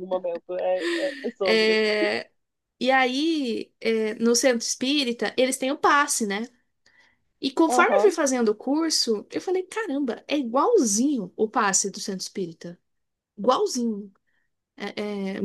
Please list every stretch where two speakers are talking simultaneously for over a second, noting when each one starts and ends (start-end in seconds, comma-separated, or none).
none